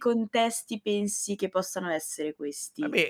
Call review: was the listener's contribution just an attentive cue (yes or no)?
no